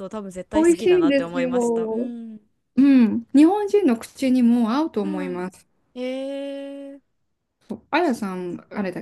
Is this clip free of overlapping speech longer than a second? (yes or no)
no